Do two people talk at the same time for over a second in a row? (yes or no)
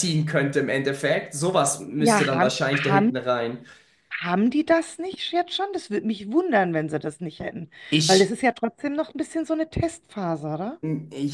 yes